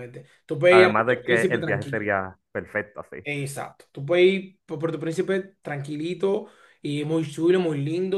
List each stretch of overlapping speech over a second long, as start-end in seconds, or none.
0.7-2.1